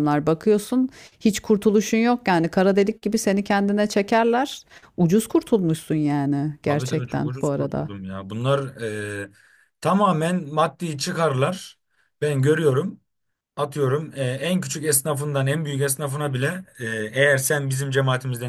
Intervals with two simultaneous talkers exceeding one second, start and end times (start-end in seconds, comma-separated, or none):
6.7-7.9